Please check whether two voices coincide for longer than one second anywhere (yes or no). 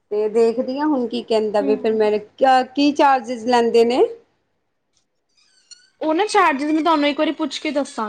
no